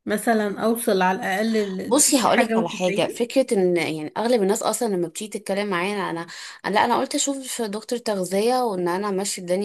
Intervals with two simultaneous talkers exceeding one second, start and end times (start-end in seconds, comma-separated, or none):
1.9-3.3